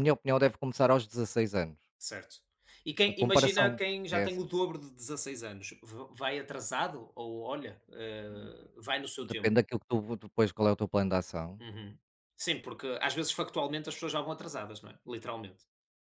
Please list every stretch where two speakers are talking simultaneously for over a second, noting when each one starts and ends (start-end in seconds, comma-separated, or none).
3.1-4.5